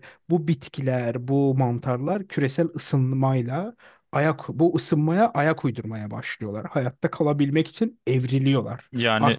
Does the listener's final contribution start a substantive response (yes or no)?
no